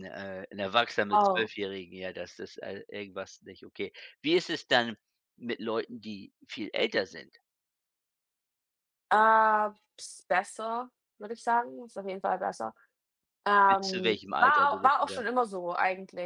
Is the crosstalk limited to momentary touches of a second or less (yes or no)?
no